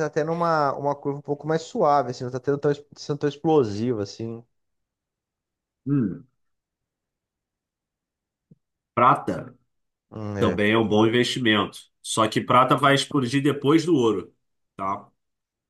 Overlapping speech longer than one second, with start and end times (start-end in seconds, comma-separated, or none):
none